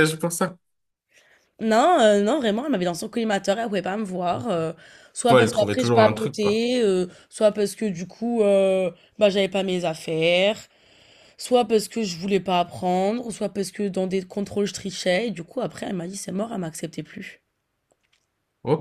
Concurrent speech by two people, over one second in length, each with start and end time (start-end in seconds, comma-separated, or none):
5.3-6.7